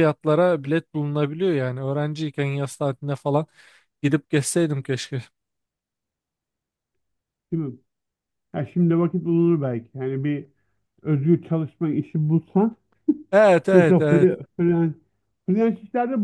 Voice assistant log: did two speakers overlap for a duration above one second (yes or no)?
no